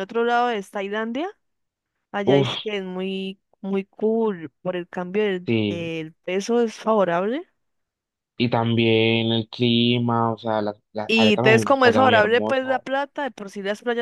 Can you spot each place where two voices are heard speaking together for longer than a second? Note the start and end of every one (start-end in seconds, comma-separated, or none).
11.1-12.8